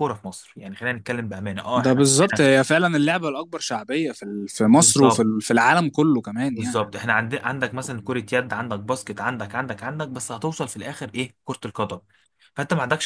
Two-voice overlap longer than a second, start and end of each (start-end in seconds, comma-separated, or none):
none